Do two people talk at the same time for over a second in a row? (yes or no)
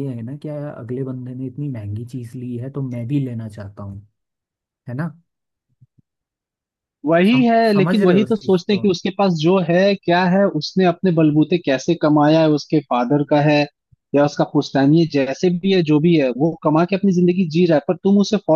yes